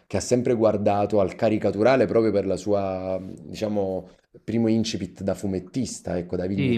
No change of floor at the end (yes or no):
no